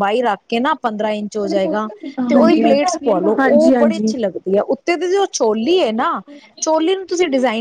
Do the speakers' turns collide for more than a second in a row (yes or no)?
yes